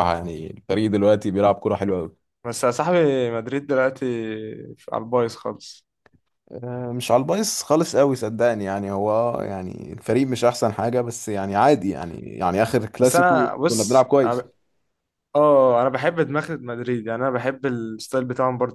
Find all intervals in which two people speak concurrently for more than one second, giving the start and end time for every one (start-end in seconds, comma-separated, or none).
13.0-14.4